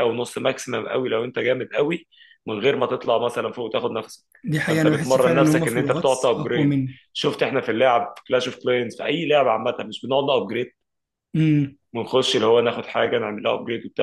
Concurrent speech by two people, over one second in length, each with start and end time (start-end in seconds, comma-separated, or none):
4.6-7.0